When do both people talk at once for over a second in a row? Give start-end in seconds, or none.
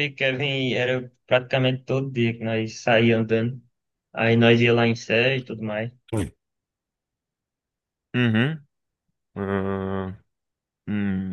none